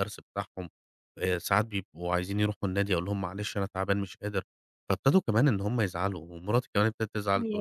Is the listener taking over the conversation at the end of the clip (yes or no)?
no